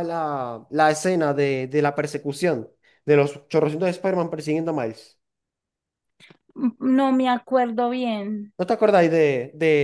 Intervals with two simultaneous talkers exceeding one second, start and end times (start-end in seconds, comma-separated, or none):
none